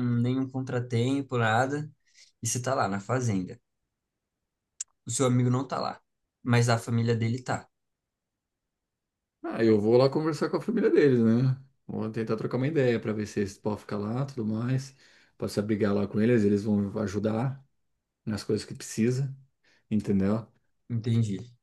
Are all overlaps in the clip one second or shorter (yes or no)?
yes